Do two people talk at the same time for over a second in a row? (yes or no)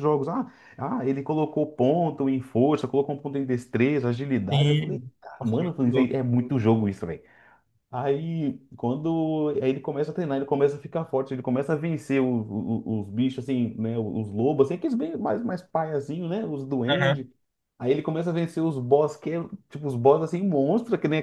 yes